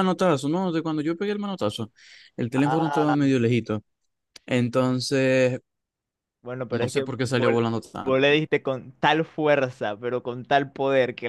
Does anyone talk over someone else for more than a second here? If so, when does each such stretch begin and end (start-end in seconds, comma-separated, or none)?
6.7-8.2